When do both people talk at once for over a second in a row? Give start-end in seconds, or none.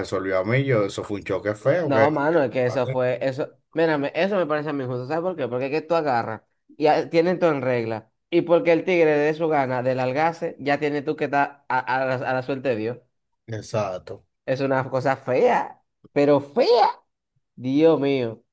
none